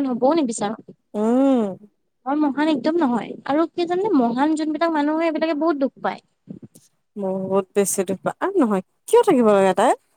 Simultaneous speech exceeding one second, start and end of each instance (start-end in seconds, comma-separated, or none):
none